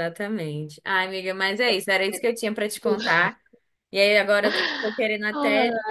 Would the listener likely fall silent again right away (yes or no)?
yes